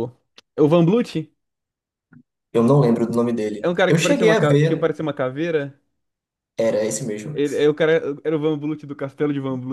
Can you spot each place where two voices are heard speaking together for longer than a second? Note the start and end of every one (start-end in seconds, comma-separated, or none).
3.6-4.9